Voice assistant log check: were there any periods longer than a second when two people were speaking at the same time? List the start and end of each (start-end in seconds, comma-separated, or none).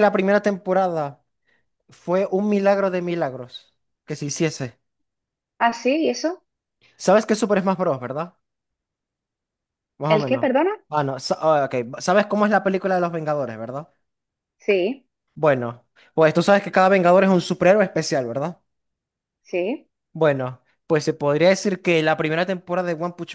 none